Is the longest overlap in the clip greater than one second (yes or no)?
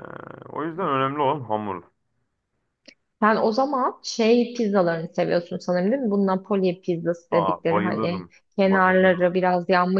yes